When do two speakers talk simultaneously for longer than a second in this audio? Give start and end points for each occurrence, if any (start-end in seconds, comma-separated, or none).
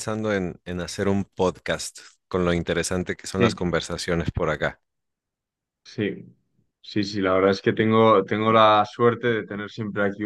none